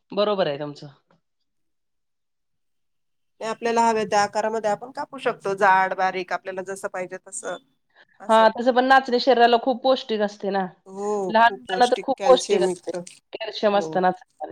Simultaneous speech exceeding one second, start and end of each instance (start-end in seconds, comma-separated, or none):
11.3-12.9